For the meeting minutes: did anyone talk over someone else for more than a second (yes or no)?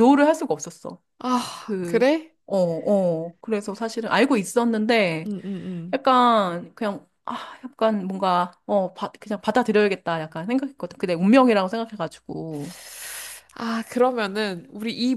no